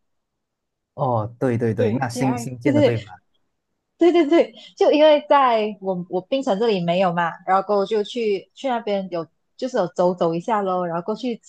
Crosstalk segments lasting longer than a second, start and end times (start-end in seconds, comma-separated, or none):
1.8-3.0